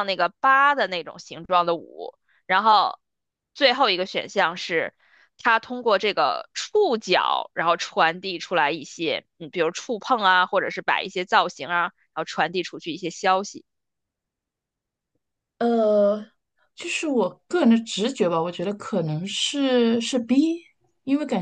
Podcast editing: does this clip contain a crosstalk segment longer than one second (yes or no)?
no